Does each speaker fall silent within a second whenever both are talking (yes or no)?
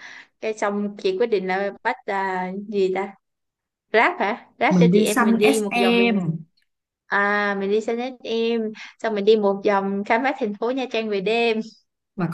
no